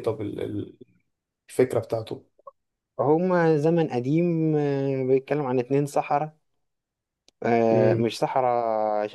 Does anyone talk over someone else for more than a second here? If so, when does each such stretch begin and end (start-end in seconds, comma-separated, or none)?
none